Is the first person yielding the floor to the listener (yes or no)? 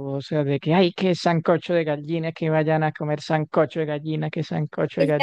yes